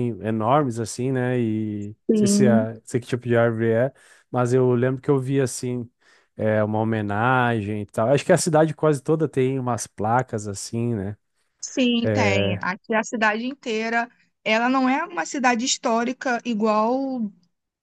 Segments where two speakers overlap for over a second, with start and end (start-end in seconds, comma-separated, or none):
none